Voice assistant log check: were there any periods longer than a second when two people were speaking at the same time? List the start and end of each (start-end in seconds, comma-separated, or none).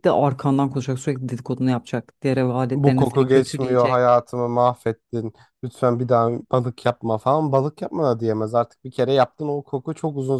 2.7-4.0